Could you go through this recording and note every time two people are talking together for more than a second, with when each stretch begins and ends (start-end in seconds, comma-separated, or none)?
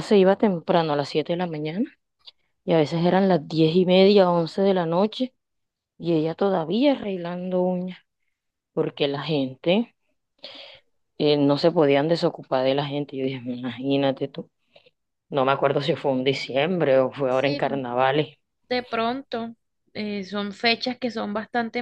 none